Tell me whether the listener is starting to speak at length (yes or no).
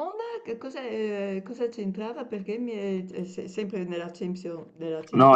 yes